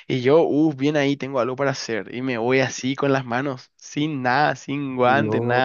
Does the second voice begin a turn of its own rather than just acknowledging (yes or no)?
no